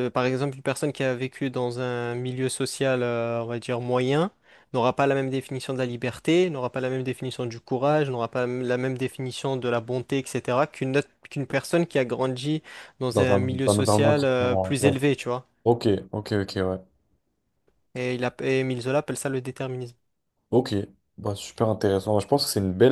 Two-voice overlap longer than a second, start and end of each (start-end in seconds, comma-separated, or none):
13.1-14.9